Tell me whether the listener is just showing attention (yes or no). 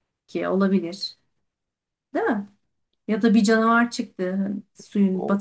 no